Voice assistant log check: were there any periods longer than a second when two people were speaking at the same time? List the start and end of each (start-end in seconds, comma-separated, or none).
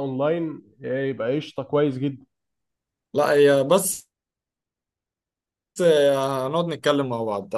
none